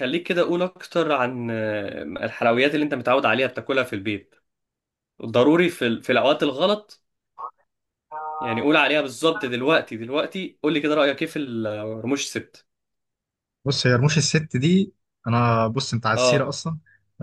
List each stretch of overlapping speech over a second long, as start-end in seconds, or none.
none